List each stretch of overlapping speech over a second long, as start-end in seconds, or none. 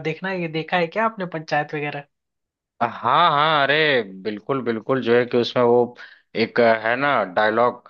none